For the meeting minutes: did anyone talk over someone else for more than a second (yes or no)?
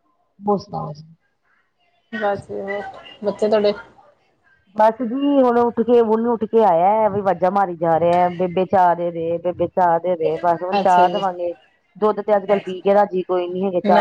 no